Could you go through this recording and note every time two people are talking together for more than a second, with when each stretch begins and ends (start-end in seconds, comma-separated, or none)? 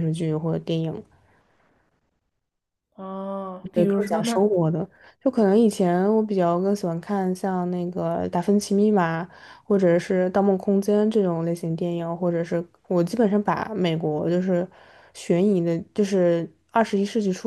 none